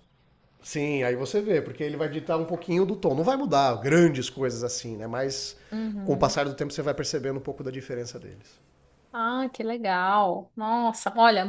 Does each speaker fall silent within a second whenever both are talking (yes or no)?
yes